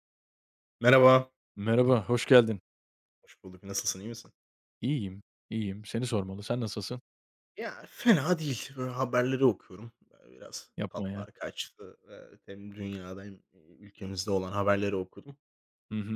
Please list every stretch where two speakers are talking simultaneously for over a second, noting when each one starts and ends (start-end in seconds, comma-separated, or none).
none